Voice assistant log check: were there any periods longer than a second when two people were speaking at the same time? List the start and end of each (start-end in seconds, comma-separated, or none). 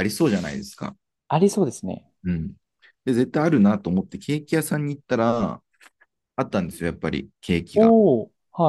none